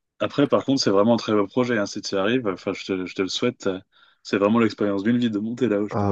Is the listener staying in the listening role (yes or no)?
no